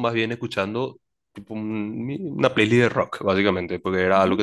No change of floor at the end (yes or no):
yes